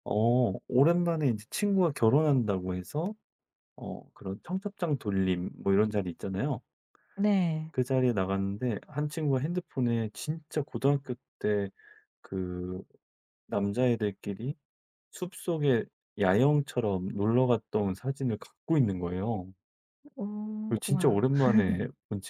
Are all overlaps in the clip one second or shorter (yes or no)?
yes